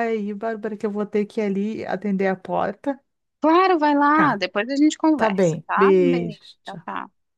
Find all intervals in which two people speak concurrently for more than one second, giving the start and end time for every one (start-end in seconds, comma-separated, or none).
5.2-6.9